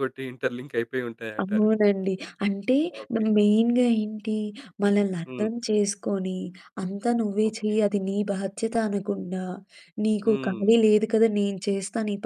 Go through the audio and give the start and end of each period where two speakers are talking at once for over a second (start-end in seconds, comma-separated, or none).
none